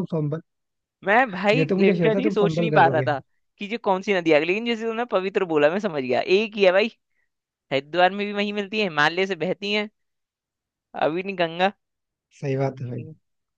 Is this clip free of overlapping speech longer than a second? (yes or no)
no